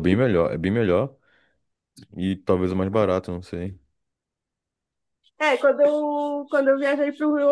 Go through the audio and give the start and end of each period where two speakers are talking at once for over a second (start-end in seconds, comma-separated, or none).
none